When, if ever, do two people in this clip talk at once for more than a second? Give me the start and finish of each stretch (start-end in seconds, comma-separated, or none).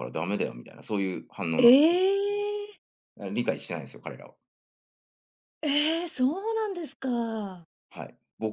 none